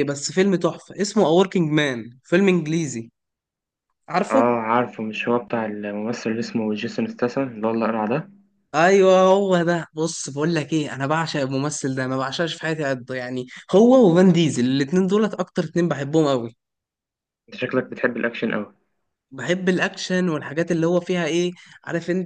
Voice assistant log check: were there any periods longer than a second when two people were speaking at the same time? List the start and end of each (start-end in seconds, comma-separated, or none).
none